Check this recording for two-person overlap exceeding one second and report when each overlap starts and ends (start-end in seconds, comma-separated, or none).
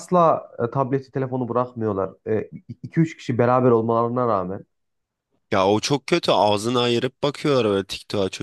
none